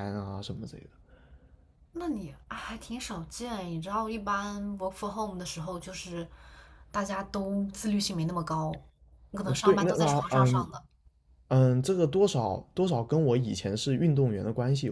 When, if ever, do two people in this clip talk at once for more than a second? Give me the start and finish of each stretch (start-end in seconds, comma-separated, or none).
9.4-10.7